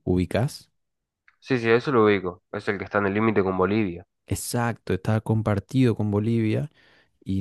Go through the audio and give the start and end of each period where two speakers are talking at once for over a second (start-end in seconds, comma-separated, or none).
none